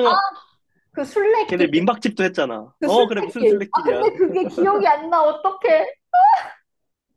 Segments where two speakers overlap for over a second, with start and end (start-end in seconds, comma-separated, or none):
2.8-4.1